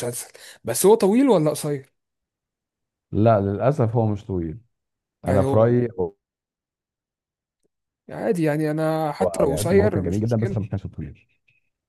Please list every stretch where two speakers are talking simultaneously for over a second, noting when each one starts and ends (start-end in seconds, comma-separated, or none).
9.2-10.6